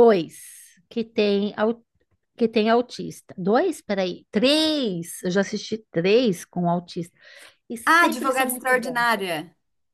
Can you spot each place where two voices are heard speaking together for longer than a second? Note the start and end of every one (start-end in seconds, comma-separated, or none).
7.9-9.1